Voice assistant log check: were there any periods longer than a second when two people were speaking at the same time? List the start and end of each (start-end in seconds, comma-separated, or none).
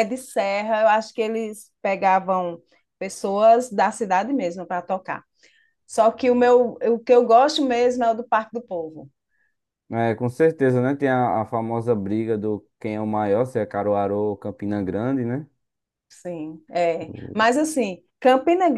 none